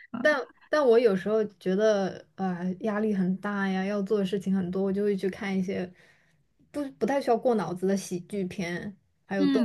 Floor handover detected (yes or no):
yes